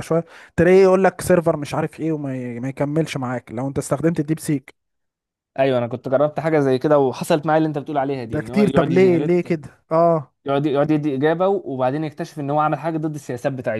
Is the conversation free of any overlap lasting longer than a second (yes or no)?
no